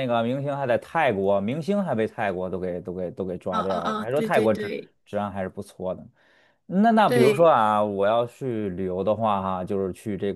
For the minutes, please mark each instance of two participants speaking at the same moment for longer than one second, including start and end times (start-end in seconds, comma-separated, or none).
3.5-4.9